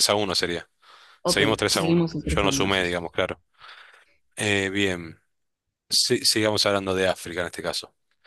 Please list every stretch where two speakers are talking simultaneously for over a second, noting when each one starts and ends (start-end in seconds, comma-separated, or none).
1.2-3.2